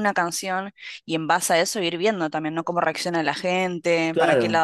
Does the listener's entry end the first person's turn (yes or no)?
no